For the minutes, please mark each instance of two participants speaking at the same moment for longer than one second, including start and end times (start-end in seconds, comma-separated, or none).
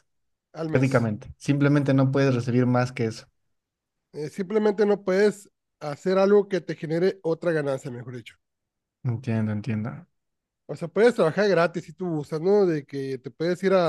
none